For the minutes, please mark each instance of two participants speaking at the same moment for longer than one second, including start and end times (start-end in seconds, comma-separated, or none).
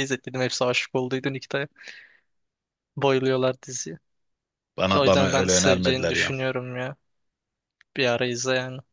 5.0-6.3